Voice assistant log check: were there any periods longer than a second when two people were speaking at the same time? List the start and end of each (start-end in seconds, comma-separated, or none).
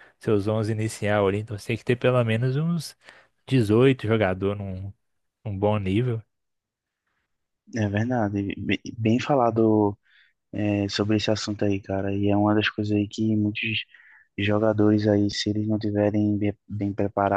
none